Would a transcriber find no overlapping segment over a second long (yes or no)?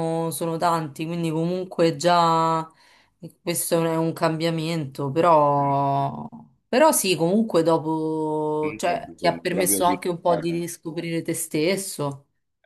no